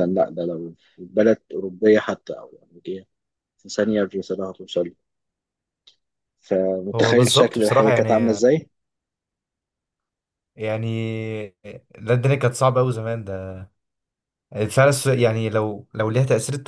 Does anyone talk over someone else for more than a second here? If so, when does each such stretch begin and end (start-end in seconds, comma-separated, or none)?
6.9-8.5